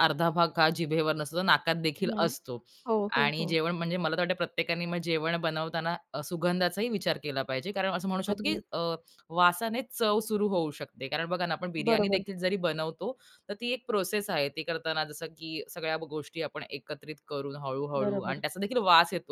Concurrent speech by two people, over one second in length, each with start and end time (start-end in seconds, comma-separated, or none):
none